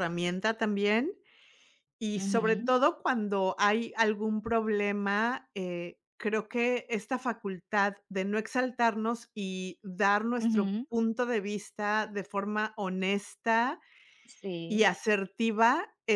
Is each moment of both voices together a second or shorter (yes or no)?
yes